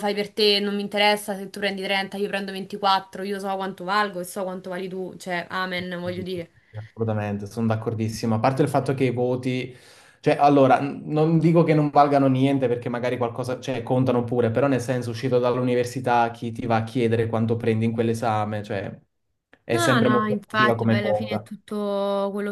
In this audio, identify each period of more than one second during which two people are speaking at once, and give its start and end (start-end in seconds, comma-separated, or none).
19.7-21.5